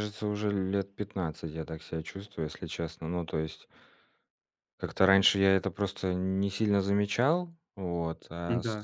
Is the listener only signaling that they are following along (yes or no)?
yes